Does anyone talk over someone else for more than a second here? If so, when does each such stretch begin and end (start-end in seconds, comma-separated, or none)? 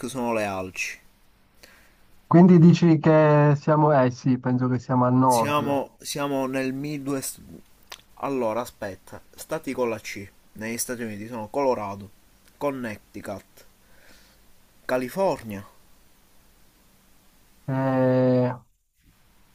none